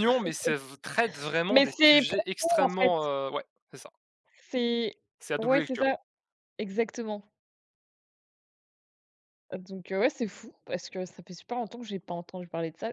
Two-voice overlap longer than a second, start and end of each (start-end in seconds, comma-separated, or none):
1.5-2.9